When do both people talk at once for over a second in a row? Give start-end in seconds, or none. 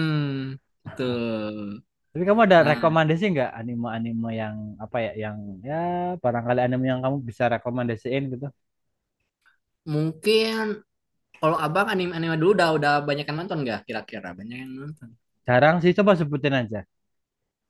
none